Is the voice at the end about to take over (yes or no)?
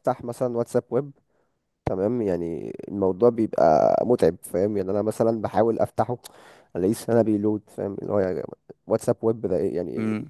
no